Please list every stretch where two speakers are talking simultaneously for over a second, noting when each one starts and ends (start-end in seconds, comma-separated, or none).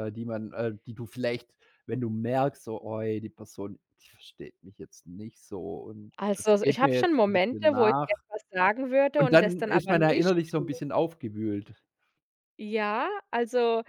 6.2-8.2, 9.2-10.8